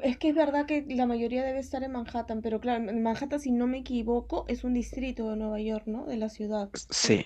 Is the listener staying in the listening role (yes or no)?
no